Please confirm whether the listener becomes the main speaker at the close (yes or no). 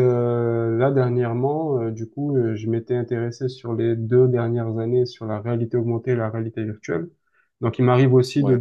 no